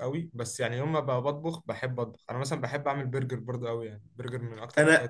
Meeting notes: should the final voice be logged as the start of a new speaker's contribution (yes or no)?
yes